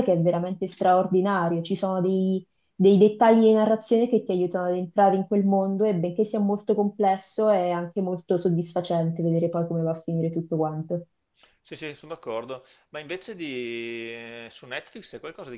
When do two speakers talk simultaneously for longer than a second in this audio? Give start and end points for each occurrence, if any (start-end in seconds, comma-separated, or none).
none